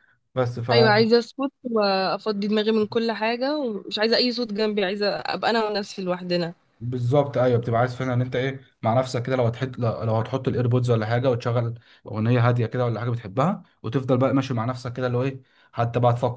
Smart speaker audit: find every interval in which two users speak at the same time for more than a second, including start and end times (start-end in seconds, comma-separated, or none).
none